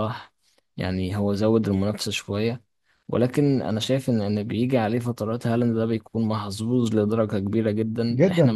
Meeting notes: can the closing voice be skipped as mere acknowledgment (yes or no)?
no